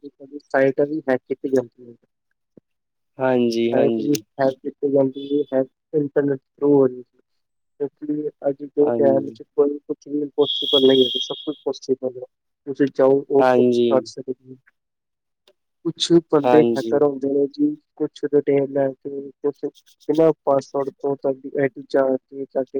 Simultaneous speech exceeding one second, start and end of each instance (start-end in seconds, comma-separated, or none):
none